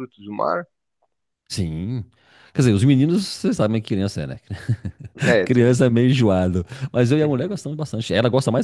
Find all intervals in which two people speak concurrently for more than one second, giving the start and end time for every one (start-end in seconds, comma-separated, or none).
none